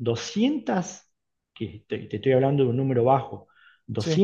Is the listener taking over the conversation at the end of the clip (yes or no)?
no